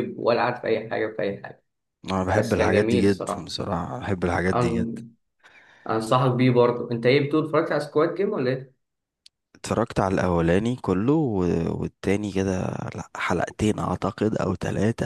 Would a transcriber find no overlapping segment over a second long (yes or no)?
no